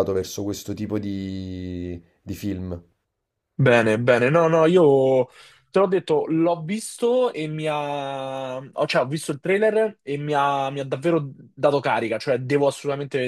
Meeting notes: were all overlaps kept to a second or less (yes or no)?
yes